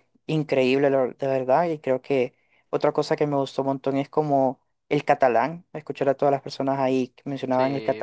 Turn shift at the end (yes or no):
yes